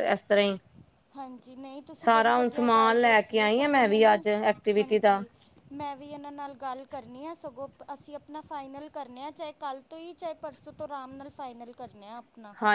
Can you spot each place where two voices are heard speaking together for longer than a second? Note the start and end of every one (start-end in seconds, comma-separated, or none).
2.0-4.1